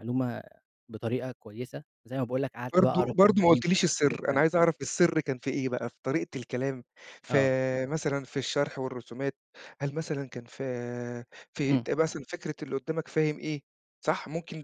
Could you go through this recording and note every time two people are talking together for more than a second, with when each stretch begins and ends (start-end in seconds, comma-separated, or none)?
2.7-4.4